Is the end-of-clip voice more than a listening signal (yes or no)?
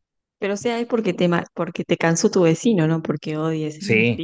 yes